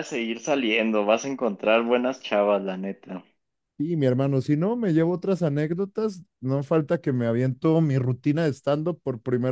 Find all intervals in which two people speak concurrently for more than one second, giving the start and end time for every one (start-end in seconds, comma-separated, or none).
none